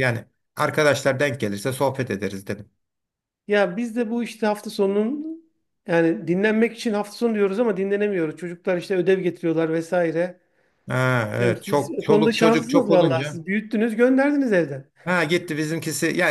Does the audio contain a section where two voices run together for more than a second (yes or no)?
yes